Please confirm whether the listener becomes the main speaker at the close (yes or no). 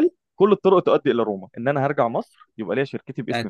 yes